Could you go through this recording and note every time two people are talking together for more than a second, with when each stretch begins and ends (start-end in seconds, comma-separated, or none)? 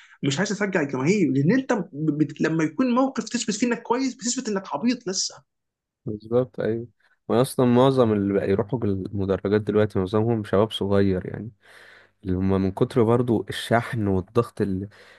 none